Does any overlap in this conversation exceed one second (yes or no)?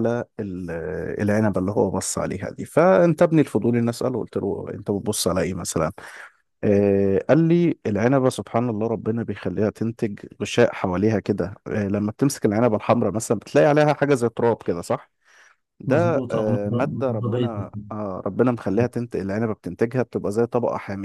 yes